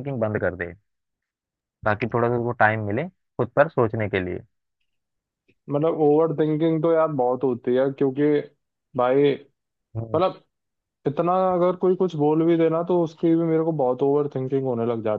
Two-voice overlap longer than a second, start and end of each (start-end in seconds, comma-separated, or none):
none